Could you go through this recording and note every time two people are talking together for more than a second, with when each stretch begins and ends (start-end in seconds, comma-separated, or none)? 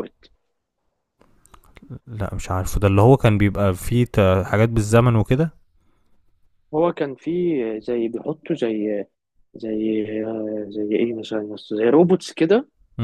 none